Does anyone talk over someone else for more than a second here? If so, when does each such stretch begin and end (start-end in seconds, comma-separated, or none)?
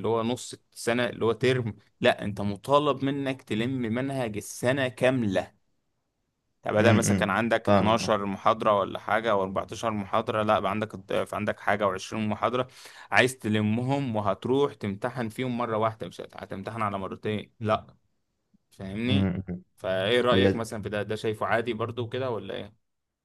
6.8-8.2